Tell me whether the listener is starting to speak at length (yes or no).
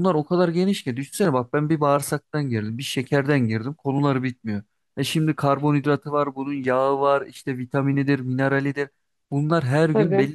no